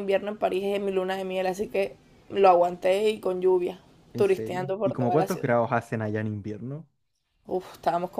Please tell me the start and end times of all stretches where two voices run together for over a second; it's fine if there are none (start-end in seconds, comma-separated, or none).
4.2-5.5